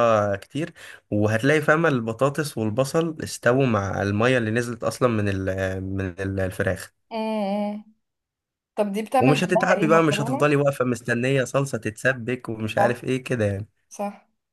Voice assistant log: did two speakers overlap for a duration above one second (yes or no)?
yes